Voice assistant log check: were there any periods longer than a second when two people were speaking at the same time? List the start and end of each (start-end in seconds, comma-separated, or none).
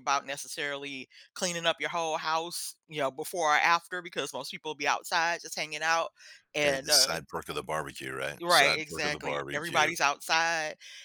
8.4-9.9